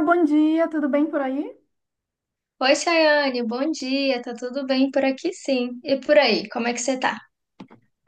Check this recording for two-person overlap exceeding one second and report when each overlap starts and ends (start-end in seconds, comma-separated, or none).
none